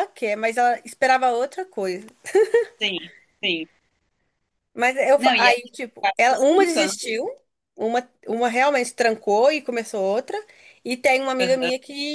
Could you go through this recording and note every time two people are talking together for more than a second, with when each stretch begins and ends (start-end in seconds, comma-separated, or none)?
5.2-7.0